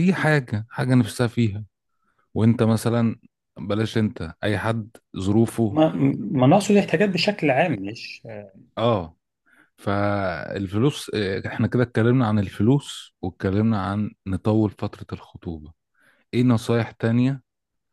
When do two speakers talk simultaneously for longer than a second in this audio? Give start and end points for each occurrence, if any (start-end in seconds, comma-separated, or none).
none